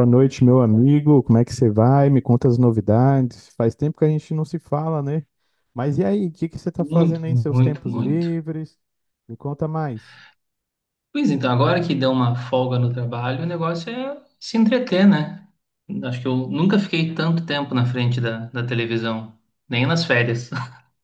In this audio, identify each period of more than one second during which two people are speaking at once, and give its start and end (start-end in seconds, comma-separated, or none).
6.8-8.3